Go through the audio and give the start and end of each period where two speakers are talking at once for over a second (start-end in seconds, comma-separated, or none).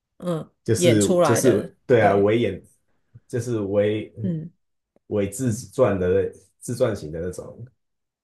0.6-2.2